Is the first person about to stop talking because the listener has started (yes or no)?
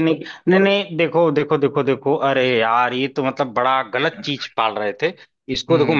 no